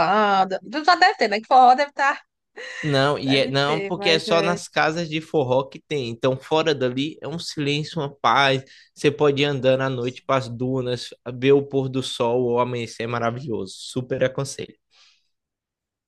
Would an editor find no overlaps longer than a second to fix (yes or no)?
no